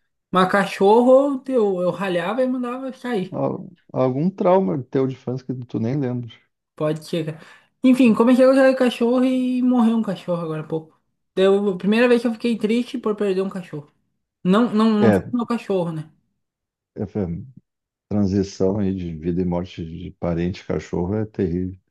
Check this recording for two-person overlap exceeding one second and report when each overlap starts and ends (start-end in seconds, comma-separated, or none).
none